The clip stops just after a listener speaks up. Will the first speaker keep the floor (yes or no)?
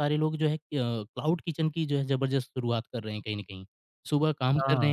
yes